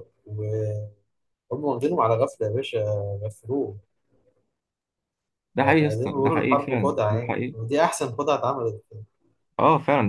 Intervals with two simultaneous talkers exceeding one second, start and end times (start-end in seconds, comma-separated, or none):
5.6-7.6